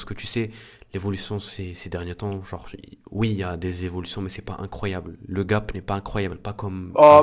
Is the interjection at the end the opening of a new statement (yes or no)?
yes